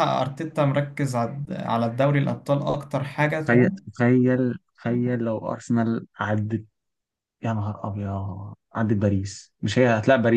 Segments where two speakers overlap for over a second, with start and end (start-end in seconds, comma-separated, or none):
none